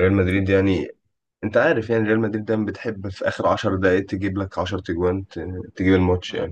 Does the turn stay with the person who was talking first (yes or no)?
yes